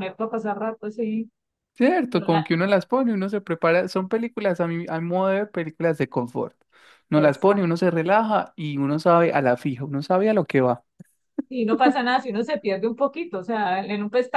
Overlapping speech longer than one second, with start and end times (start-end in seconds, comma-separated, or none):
none